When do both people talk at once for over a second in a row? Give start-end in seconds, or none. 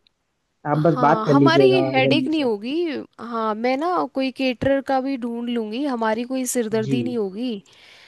0.8-2.5